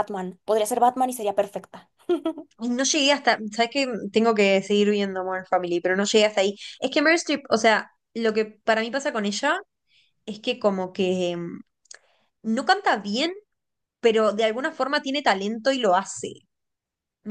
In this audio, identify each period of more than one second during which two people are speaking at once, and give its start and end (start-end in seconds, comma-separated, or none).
none